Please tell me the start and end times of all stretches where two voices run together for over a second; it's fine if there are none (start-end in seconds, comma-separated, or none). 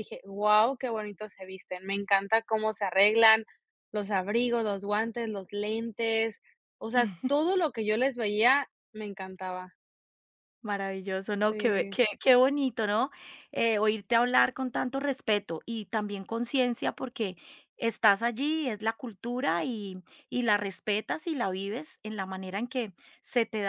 none